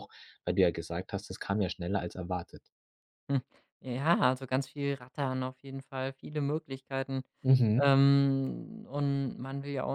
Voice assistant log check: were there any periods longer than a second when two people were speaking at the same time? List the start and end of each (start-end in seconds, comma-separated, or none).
none